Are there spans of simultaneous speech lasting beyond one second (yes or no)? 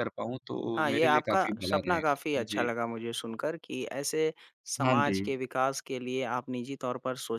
yes